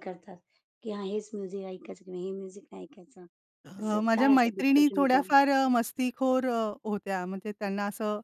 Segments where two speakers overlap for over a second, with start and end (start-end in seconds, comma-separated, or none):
3.8-5.3